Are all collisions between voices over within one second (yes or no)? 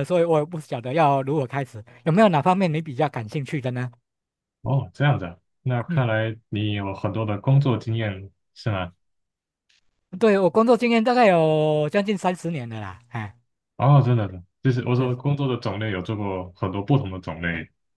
yes